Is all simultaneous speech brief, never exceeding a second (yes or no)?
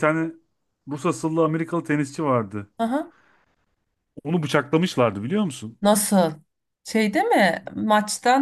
yes